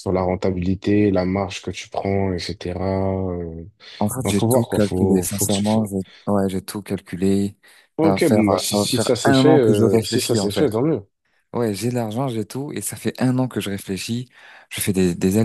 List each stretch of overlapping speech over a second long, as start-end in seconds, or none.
4.2-5.9, 8.0-10.7